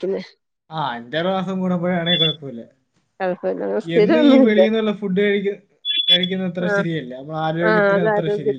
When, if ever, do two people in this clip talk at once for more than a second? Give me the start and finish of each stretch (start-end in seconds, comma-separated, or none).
none